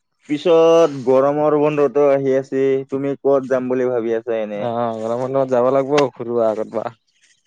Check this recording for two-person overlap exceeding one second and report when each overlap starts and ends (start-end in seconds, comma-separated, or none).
none